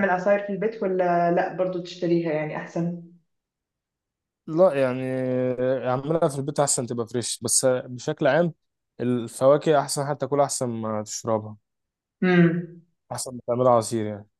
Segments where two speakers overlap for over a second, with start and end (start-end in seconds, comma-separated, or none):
none